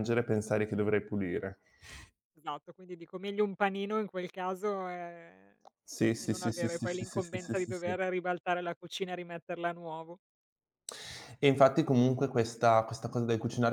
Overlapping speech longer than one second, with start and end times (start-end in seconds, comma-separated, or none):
6.2-7.9